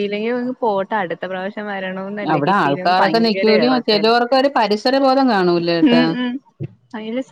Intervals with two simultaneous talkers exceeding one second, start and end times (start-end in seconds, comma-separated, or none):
2.3-4.0